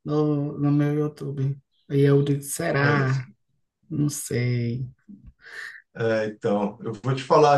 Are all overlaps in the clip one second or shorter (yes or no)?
yes